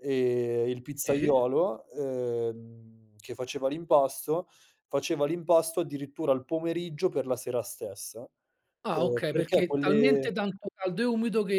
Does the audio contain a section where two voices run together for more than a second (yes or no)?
yes